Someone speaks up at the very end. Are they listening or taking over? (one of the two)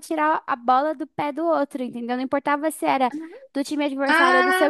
listening